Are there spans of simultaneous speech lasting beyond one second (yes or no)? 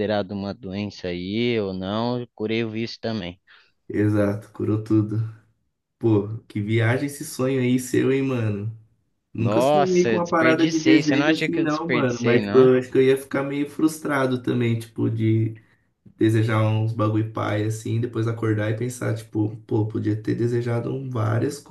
yes